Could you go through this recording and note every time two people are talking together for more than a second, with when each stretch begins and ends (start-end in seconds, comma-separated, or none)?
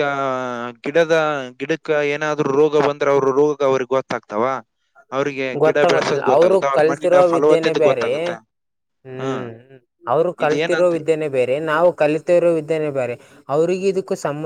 5.6-8.1